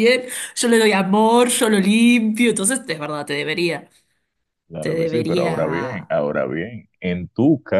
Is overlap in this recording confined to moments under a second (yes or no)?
no